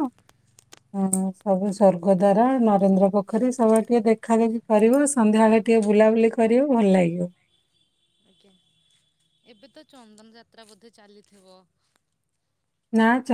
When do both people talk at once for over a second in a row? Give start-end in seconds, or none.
none